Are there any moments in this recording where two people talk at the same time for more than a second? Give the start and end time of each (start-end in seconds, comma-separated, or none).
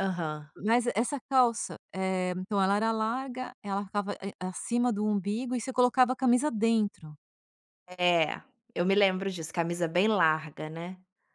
none